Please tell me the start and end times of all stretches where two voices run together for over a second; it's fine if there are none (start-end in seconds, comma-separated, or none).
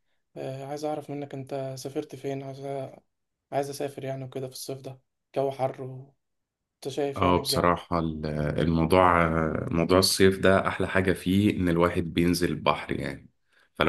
none